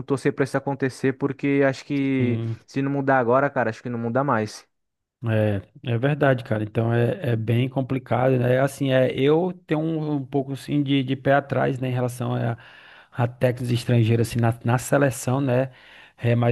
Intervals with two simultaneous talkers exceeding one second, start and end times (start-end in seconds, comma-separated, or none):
none